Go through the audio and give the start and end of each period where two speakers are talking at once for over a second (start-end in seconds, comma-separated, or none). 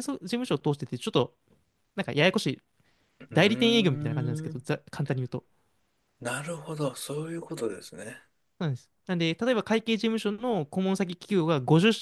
3.3-4.6